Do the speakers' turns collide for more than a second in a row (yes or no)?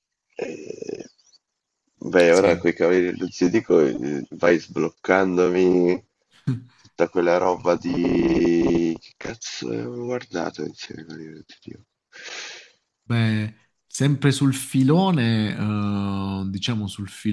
no